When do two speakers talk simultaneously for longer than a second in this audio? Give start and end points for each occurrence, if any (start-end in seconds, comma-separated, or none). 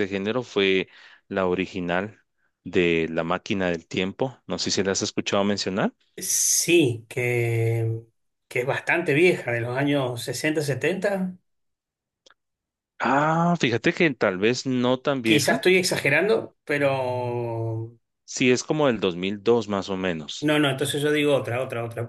none